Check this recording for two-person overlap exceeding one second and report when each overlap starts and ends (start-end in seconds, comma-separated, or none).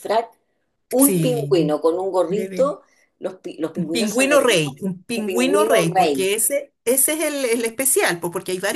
3.9-6.3